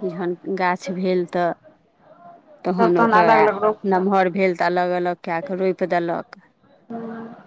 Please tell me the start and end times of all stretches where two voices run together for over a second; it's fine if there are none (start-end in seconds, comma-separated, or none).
none